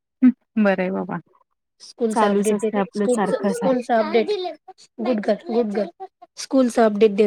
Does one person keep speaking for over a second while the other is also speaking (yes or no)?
yes